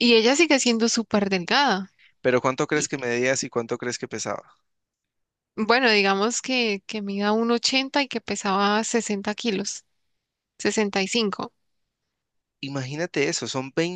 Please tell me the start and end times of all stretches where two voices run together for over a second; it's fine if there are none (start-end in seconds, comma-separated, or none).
none